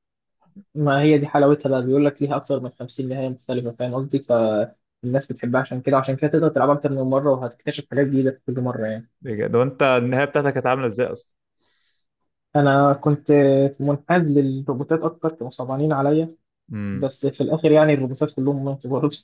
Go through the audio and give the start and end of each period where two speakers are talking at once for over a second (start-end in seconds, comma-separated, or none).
none